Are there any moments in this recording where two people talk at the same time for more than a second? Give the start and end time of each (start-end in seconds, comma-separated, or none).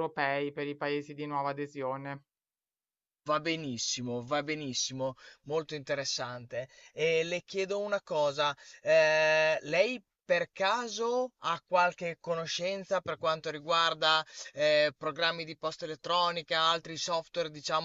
none